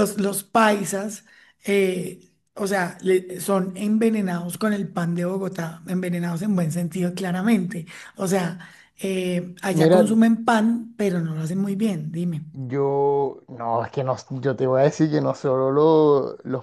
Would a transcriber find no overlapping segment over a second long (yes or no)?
yes